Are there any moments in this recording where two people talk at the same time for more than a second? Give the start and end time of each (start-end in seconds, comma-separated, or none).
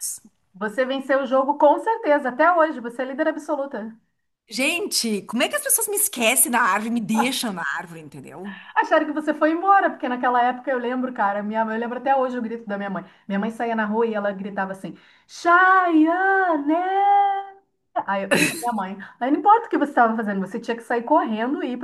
none